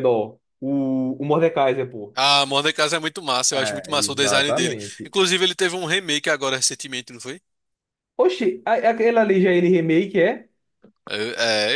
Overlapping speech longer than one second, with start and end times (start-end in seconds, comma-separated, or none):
3.5-5.1